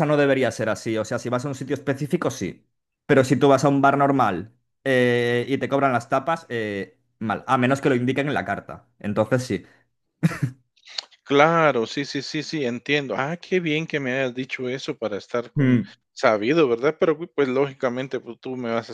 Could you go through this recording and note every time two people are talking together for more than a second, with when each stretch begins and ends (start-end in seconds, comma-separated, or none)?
none